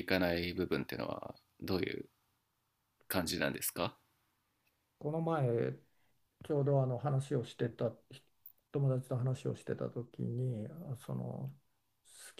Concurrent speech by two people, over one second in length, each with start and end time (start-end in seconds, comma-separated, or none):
none